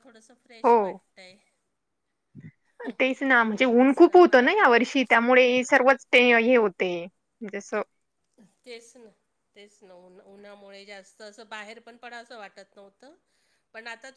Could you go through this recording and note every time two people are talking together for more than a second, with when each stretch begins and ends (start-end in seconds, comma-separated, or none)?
none